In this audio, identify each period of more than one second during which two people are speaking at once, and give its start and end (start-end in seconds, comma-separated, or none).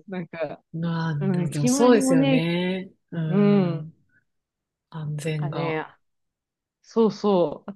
1.2-2.5